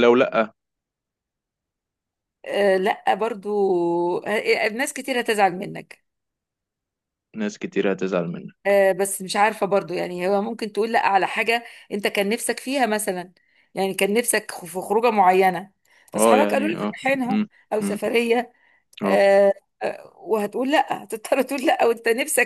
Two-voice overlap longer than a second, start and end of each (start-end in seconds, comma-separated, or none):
16.1-18.0